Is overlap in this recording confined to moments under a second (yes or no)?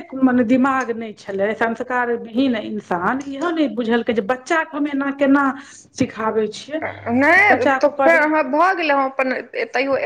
yes